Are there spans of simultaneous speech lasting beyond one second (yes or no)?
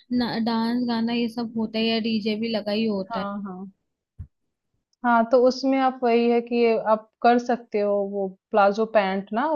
no